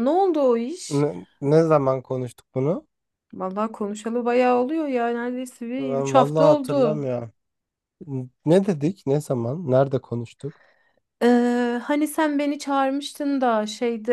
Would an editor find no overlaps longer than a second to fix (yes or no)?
no